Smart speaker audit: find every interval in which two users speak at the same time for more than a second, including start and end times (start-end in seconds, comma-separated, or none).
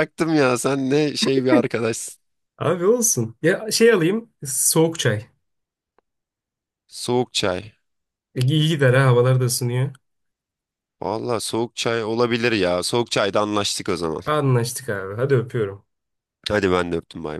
none